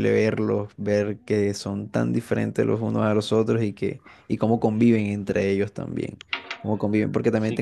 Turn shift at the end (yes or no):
no